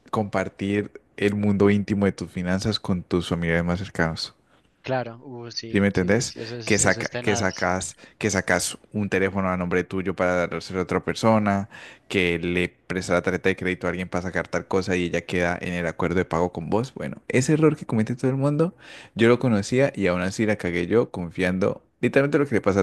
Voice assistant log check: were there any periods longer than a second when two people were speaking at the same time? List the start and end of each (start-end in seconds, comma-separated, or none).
5.7-7.7